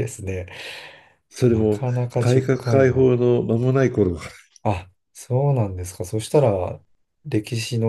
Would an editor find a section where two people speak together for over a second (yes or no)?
yes